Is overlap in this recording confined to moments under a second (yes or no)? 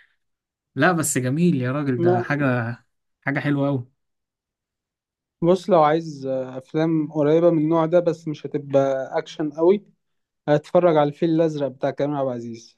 yes